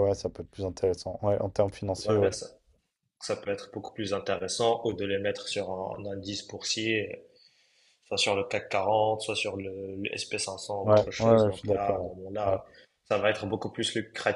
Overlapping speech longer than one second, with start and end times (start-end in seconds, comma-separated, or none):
10.8-12.6